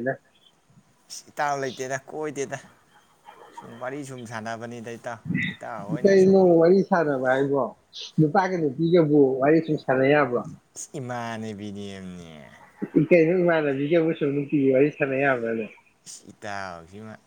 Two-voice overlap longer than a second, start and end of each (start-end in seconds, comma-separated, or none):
none